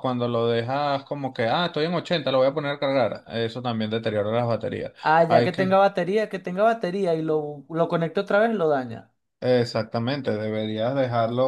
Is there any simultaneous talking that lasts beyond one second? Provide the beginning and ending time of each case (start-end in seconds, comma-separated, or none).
none